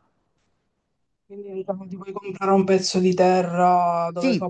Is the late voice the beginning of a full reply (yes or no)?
yes